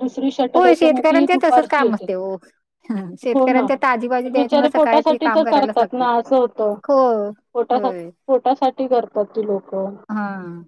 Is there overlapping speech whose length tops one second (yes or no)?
yes